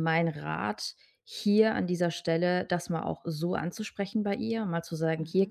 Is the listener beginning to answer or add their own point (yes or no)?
no